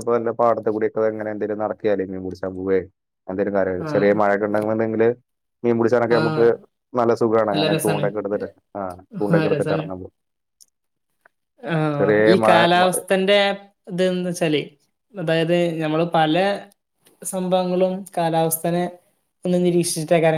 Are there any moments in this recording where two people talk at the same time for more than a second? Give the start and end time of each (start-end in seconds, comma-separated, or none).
none